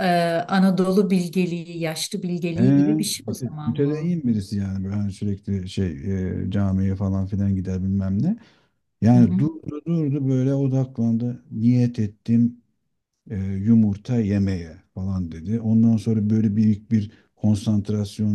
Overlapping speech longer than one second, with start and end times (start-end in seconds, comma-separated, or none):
2.5-4.1